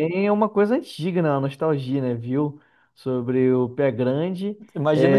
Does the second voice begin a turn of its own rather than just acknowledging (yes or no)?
yes